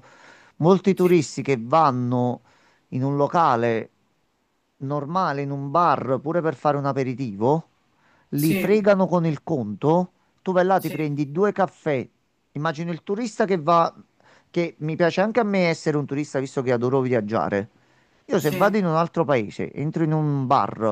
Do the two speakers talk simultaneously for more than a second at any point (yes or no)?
no